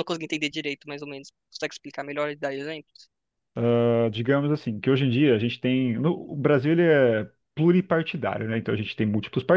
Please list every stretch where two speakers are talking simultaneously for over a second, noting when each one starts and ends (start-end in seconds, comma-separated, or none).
none